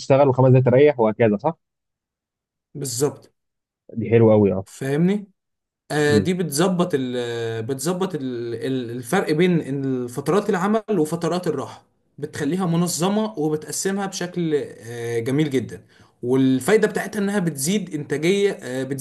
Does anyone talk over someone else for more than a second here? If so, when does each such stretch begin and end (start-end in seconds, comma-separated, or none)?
none